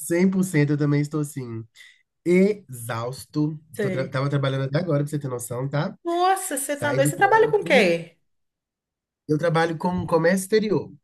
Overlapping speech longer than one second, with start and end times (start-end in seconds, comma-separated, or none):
6.7-7.9